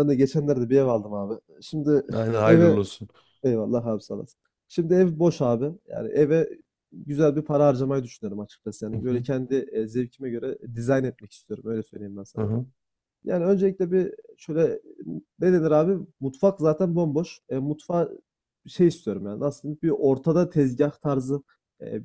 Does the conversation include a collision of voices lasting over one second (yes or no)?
no